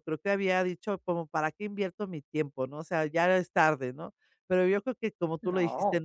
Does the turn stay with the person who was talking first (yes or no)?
yes